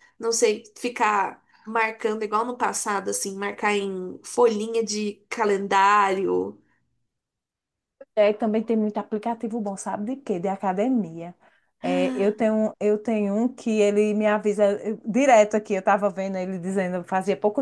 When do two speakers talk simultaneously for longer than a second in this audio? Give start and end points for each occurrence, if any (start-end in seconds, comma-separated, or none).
none